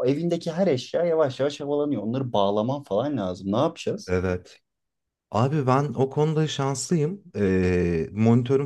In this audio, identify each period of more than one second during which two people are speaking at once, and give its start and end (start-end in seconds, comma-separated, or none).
none